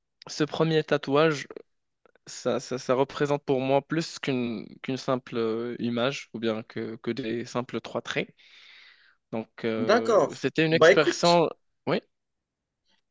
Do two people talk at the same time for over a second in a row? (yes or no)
yes